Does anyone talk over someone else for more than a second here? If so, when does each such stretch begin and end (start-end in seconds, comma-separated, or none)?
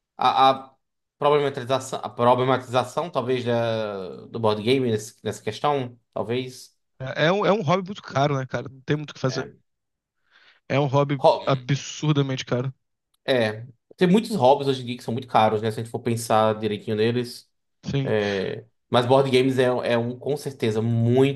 none